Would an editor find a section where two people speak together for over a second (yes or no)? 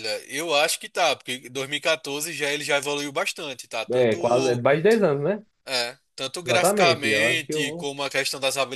yes